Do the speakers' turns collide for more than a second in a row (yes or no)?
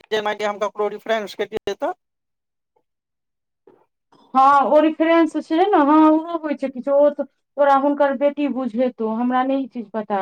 no